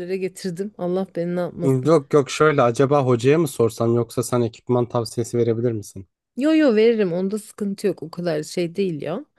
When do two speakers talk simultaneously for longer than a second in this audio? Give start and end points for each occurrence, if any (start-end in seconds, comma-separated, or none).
none